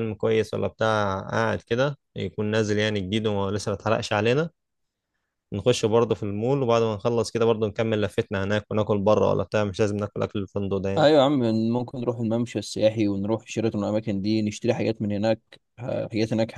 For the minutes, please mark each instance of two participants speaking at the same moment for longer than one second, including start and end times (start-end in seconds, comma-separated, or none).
none